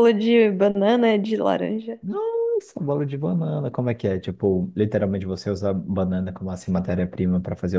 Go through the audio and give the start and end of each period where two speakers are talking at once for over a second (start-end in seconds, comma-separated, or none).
none